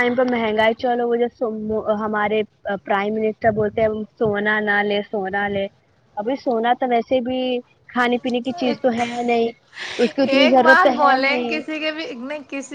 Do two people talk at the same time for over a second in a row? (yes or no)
yes